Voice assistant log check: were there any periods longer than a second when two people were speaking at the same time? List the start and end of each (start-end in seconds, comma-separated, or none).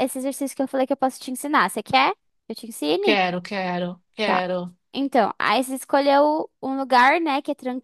none